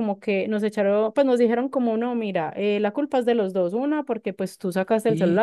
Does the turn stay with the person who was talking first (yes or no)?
yes